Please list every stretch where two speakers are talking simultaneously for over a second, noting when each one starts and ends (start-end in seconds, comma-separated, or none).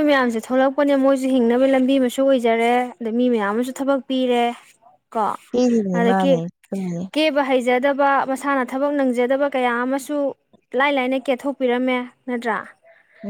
none